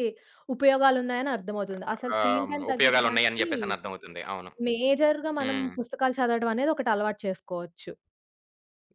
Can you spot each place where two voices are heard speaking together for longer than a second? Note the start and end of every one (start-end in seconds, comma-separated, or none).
2.2-3.5